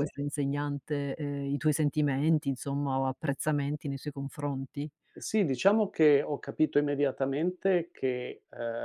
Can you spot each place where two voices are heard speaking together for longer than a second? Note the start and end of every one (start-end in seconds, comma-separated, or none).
none